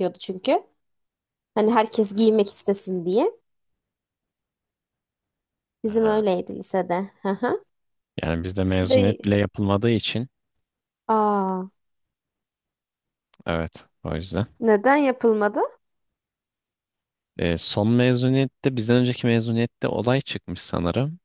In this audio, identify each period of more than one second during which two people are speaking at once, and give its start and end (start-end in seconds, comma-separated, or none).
none